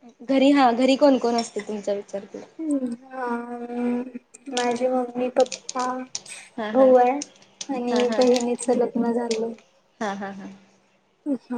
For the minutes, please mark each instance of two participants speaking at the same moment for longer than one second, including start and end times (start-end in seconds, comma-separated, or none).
none